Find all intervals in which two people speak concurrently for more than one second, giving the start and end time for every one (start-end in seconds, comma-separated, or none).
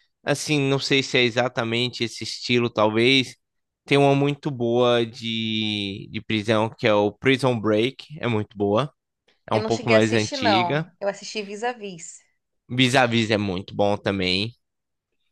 9.5-10.9